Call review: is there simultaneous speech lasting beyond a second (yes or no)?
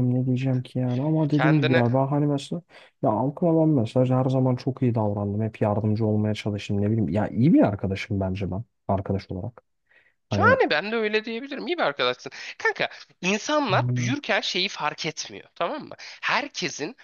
no